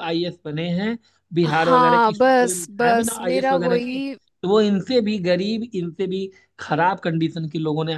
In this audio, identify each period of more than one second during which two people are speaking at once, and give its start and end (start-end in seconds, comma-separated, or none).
1.4-4.0